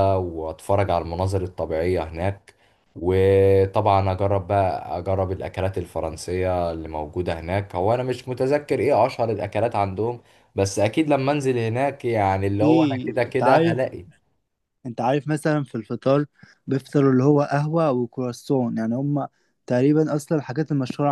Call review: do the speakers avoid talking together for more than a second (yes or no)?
no